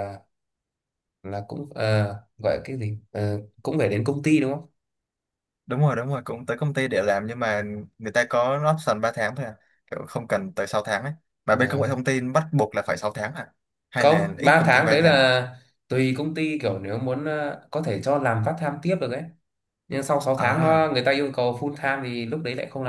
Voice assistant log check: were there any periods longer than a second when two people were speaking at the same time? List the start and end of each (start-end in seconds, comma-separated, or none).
13.9-15.2